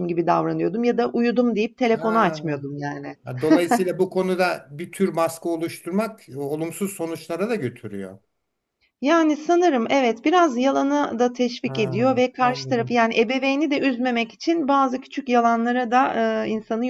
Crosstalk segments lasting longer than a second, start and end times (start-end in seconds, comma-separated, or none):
11.6-13.0